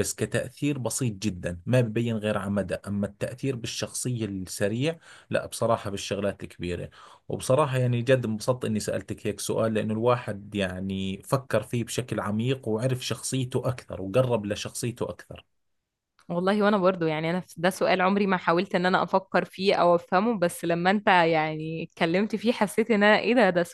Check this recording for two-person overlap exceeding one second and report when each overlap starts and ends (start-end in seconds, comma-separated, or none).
none